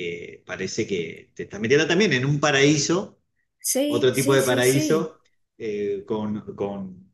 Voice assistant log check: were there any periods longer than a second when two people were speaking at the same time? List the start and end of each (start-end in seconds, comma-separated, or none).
3.9-5.1